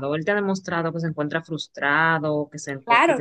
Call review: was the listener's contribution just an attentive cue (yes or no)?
no